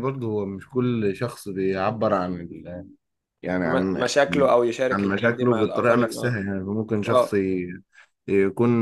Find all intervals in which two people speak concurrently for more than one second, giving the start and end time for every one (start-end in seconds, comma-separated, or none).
4.9-6.4